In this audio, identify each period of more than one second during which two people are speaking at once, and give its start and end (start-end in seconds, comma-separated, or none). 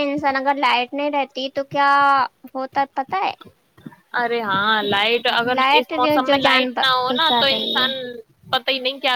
5.5-7.9